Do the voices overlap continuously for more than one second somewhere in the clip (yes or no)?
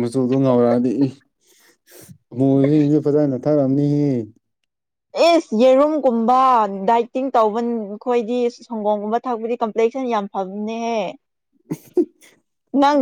no